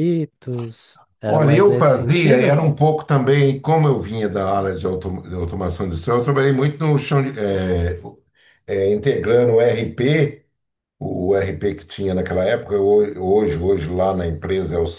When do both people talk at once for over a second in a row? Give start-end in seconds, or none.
1.3-2.5